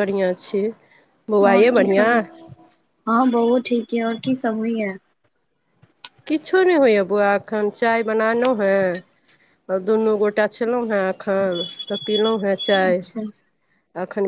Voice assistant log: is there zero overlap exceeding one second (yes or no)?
yes